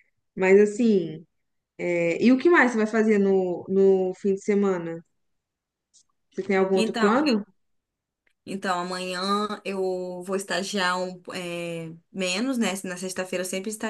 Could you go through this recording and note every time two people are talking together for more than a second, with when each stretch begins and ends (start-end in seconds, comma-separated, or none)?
none